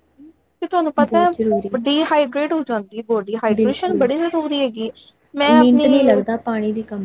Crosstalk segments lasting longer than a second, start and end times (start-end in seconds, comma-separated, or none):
none